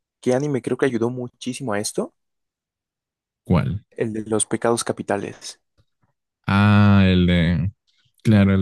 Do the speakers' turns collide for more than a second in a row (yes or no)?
no